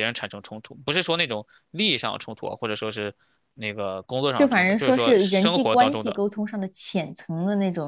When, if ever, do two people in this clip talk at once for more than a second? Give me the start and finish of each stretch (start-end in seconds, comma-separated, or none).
4.3-6.2